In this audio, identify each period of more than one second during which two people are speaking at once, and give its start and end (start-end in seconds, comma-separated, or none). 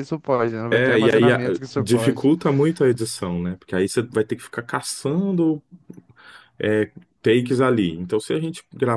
0.7-2.3